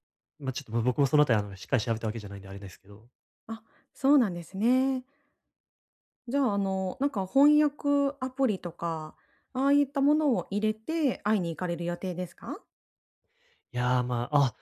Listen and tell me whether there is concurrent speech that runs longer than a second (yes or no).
no